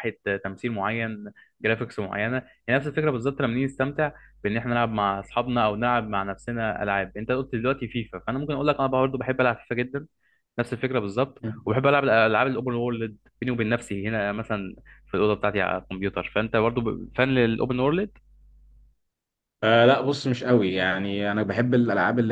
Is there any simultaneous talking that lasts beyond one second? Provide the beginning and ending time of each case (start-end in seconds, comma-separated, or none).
none